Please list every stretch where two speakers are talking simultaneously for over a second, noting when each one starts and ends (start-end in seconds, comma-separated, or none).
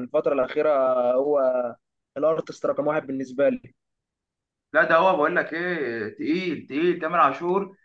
none